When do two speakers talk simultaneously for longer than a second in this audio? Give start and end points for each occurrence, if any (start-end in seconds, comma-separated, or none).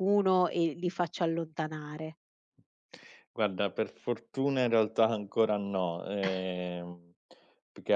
none